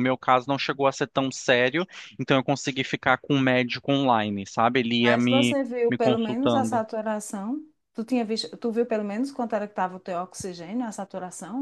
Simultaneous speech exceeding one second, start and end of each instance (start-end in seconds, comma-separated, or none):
5.0-6.8